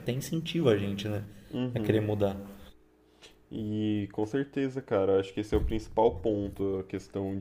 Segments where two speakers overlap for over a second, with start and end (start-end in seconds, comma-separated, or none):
none